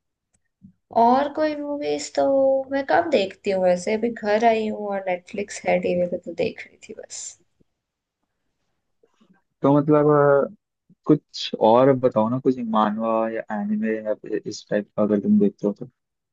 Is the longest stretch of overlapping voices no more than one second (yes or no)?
yes